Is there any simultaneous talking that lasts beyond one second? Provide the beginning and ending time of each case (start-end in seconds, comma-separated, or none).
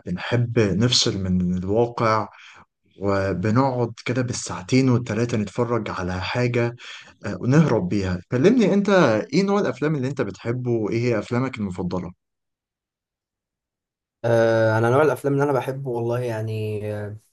none